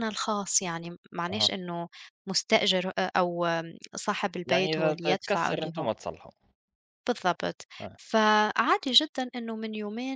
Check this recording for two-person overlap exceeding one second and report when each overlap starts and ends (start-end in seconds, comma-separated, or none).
4.5-5.9